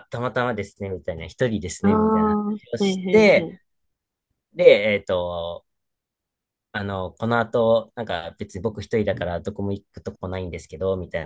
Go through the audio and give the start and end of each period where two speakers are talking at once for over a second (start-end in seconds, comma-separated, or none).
1.8-3.6